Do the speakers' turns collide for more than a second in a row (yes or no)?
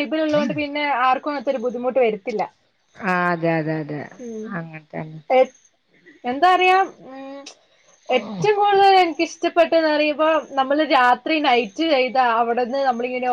no